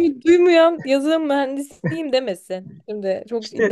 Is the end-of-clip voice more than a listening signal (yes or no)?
yes